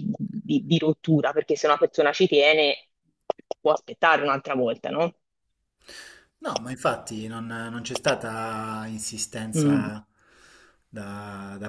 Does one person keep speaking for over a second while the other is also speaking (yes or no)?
no